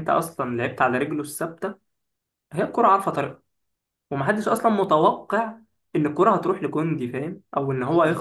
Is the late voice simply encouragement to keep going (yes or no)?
no